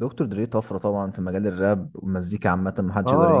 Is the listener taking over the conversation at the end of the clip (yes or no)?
yes